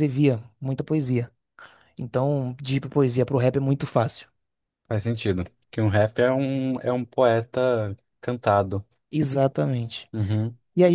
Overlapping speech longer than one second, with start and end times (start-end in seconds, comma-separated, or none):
none